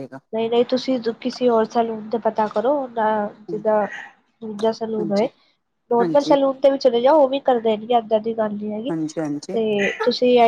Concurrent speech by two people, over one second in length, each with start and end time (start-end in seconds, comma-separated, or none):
none